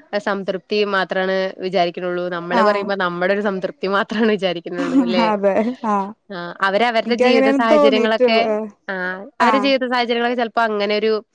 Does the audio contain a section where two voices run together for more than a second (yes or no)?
yes